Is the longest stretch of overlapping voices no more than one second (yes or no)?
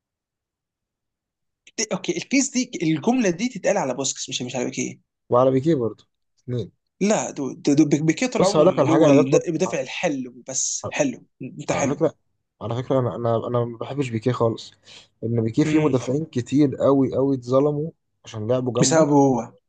no